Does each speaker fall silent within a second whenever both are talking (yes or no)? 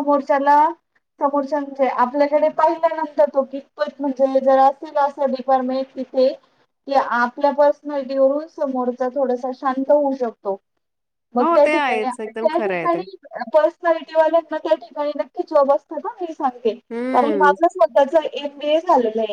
no